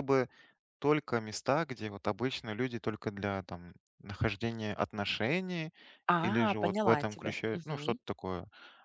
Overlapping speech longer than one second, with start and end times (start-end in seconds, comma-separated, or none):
6.2-8.0